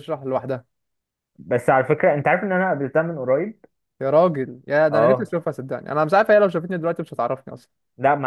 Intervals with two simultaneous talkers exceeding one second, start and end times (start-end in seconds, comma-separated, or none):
none